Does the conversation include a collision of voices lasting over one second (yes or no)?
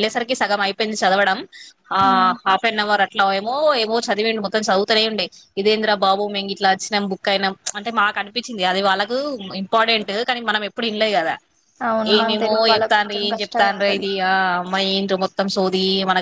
yes